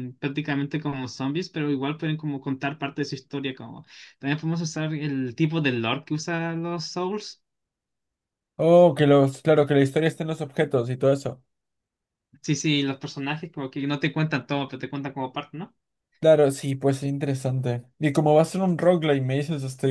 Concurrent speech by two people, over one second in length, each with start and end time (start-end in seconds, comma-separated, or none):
none